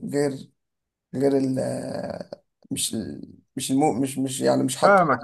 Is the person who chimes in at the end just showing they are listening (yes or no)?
no